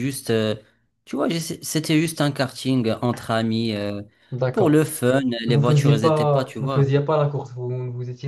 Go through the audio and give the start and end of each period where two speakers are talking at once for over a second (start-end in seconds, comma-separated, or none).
5.5-6.8